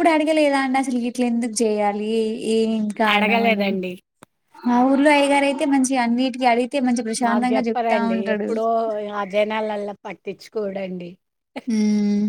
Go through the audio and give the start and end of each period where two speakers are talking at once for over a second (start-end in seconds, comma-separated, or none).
none